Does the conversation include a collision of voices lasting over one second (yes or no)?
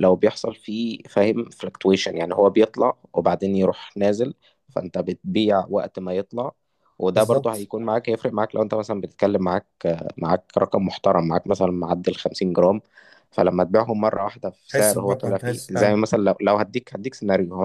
yes